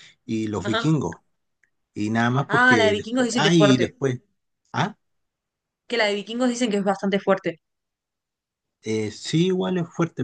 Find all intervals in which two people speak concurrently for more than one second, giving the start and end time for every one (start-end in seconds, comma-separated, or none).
2.5-3.9